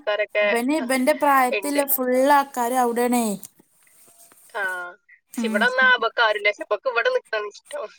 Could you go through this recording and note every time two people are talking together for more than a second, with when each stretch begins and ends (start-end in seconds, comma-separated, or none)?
none